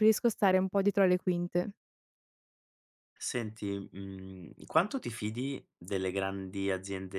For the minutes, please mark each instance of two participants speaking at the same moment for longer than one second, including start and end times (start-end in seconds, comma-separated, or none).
none